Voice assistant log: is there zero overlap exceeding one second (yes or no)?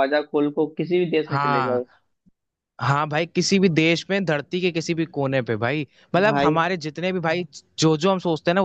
yes